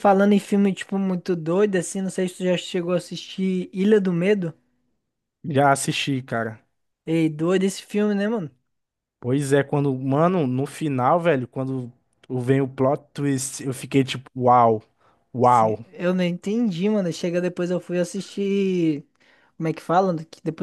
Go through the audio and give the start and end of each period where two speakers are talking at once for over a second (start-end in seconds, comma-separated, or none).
none